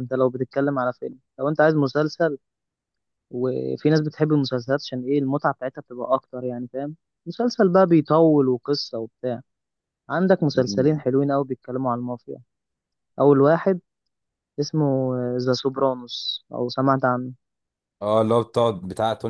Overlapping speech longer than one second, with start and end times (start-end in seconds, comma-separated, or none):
none